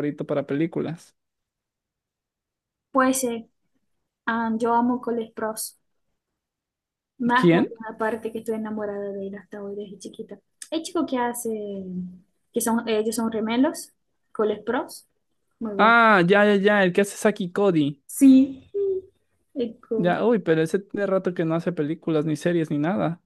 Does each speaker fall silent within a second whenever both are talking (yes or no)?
yes